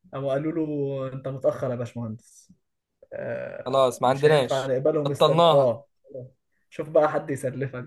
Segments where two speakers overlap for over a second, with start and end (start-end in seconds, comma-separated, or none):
3.6-5.8